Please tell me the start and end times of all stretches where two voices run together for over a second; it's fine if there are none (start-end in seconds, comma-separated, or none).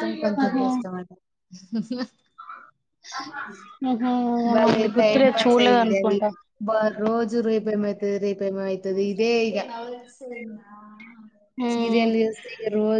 4.5-6.2